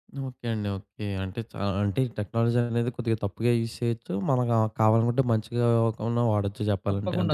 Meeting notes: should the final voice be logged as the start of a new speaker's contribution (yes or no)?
yes